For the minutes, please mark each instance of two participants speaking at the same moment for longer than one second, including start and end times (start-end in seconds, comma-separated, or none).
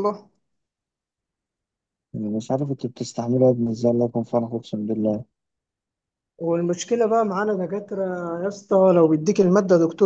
none